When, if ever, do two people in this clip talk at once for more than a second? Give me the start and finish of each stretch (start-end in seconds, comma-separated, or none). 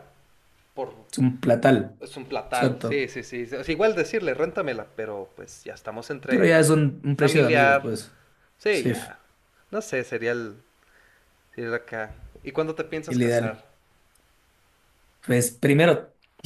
6.3-8.0